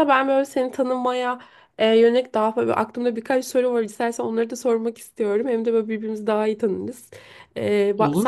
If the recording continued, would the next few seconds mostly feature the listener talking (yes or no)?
no